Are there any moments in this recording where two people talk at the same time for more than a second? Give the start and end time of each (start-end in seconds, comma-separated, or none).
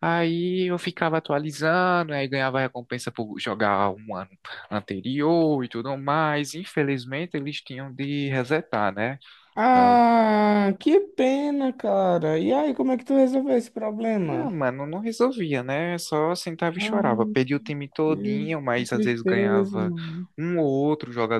18.1-19.9